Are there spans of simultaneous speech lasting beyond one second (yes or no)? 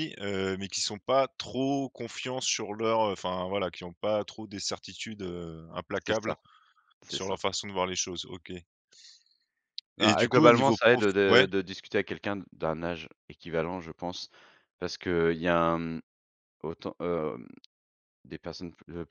yes